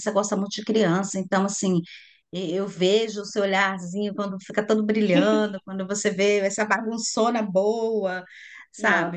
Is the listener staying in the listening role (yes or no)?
yes